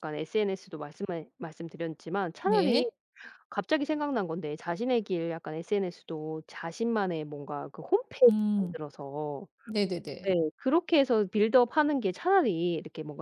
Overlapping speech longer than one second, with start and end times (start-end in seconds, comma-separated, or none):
none